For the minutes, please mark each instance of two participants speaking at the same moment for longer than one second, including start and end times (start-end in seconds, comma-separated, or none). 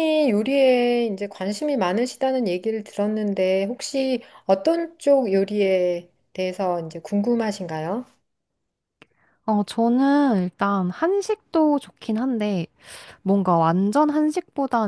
none